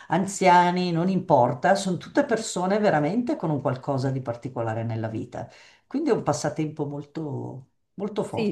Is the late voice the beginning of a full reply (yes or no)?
yes